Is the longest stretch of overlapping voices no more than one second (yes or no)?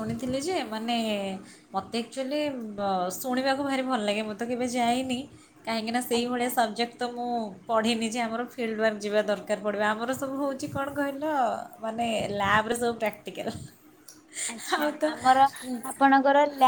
yes